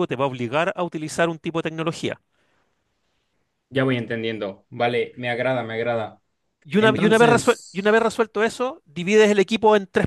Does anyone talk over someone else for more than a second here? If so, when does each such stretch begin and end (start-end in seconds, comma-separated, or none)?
6.8-8.1